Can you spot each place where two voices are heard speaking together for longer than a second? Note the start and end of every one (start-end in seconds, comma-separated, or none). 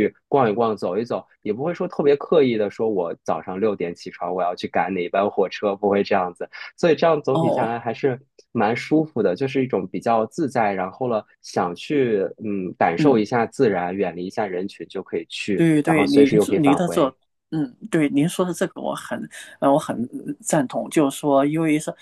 15.5-17.1